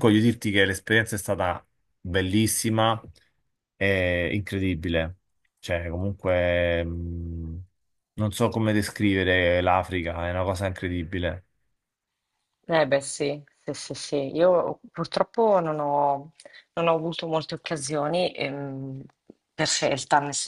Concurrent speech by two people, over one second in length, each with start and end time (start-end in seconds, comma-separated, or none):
none